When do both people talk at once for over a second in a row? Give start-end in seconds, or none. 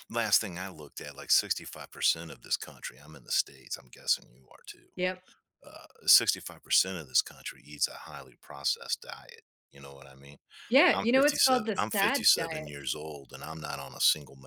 10.9-12.7